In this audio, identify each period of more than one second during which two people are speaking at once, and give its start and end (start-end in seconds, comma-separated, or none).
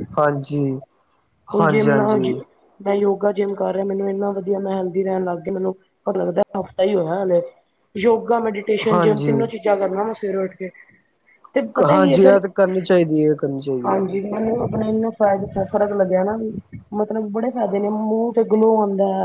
none